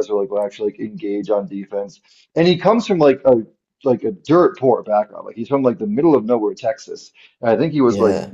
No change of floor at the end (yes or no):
yes